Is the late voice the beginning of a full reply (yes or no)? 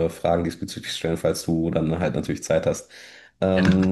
no